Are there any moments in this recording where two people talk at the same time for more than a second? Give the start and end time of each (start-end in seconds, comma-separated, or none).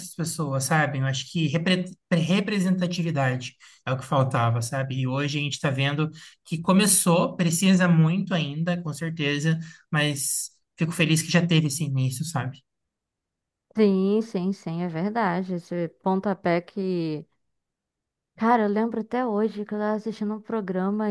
none